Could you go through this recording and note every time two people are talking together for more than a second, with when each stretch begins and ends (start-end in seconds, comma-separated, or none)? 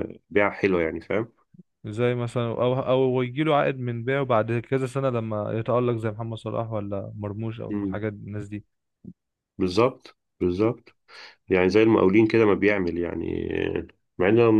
none